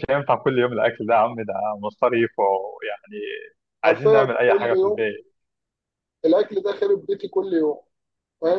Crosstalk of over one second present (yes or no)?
yes